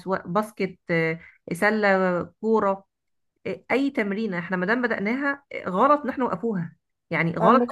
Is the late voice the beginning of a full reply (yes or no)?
no